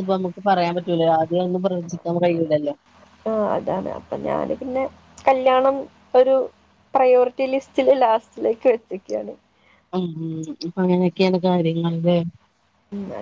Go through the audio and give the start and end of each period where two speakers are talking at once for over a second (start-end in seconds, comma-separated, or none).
none